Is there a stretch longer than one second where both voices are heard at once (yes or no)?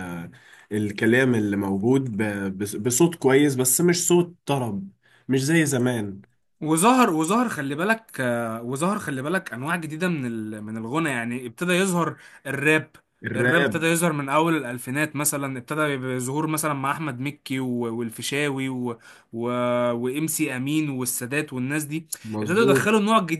no